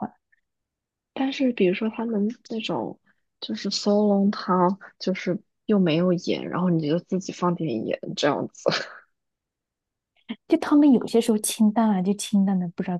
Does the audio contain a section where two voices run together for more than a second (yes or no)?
no